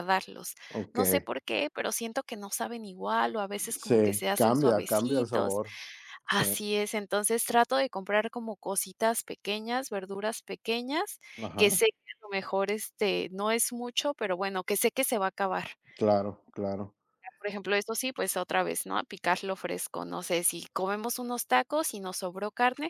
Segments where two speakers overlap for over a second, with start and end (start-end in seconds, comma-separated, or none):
3.8-5.6